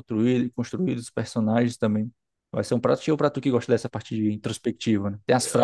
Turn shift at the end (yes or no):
yes